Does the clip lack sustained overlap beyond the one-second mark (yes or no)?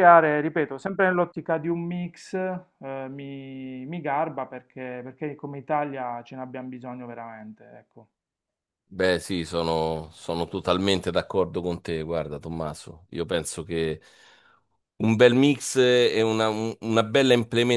yes